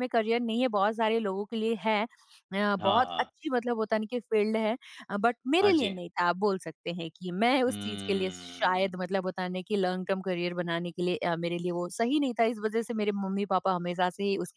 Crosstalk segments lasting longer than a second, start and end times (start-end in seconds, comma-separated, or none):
7.7-8.9